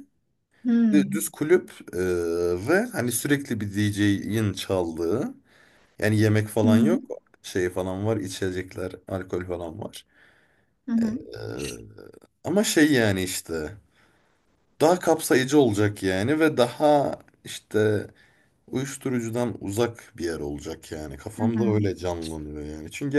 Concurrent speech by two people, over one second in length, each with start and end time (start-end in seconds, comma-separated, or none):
none